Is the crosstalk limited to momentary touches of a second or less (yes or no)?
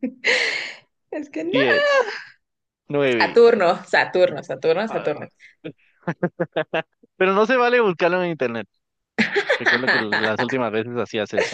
yes